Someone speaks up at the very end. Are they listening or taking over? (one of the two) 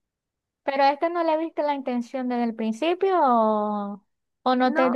listening